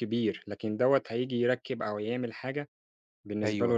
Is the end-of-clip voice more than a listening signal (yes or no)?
yes